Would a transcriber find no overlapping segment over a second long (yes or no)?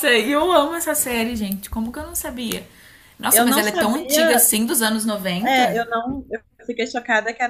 no